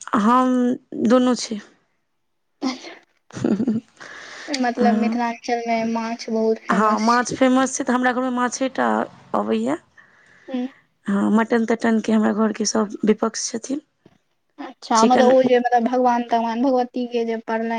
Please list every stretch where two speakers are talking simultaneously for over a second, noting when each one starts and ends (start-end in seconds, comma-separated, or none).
none